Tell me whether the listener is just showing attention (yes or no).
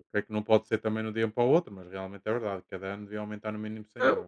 no